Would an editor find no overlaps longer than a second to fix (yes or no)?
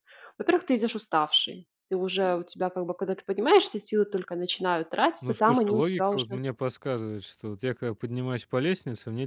no